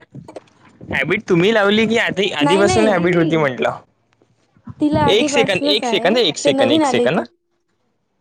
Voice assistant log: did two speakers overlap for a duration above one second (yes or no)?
yes